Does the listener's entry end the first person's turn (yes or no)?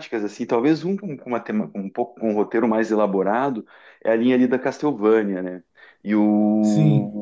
no